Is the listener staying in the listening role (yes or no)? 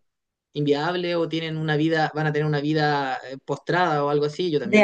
no